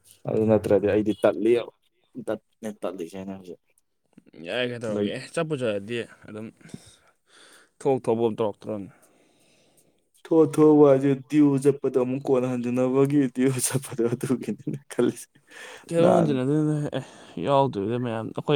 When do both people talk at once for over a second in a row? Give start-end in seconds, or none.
none